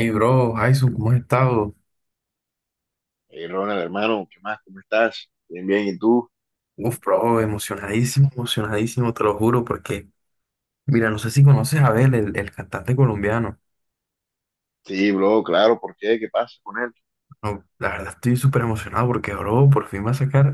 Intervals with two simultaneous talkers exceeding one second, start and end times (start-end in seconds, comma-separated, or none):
none